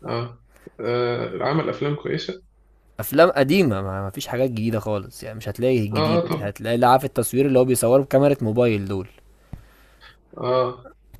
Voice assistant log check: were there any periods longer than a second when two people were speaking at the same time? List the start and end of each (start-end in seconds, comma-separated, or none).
none